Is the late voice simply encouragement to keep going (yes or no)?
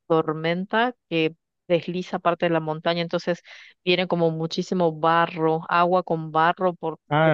no